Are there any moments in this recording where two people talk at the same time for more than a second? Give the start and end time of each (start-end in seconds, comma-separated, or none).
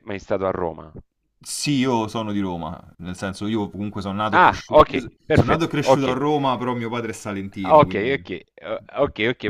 4.3-6.2